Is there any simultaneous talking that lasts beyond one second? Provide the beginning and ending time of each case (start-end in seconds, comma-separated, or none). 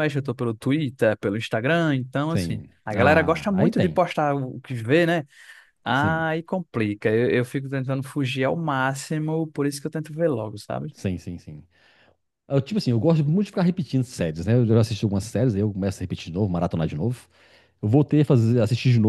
2.3-4.0